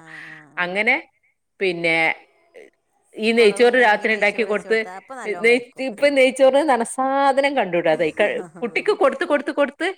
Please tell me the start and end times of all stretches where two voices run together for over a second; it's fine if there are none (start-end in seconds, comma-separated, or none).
3.4-4.8